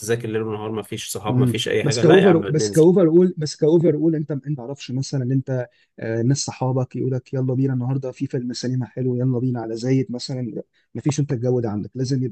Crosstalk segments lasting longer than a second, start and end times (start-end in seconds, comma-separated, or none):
1.3-2.8